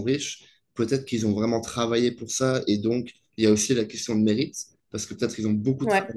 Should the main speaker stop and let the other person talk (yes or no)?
no